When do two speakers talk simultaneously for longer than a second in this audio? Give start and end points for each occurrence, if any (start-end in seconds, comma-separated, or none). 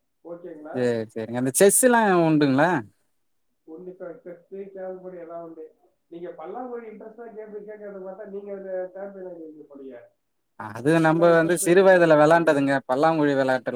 11.1-12.6